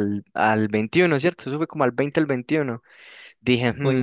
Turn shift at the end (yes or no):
no